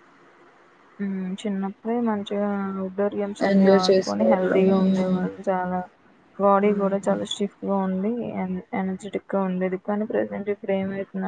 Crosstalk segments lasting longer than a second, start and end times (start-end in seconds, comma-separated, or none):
3.5-5.3